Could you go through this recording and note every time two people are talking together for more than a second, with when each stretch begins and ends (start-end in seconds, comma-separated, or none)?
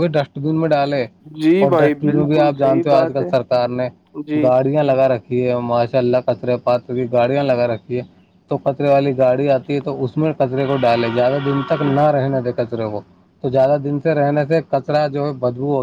1.6-3.3